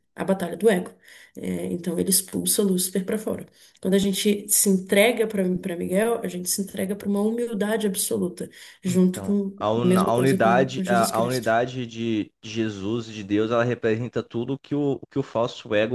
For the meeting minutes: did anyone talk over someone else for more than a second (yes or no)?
yes